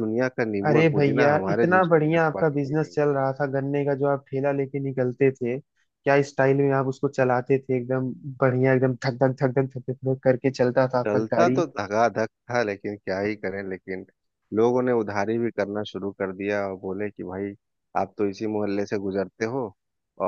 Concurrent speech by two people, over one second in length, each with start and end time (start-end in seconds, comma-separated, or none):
0.7-3.0